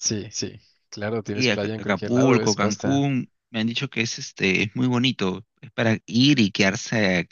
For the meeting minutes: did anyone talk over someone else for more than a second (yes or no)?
yes